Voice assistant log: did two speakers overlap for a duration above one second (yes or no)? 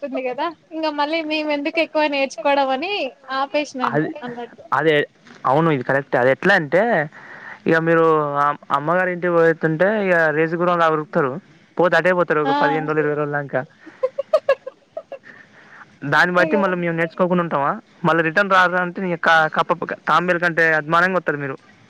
no